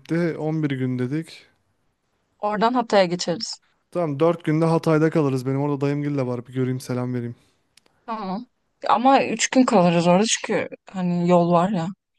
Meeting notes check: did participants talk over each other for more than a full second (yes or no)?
no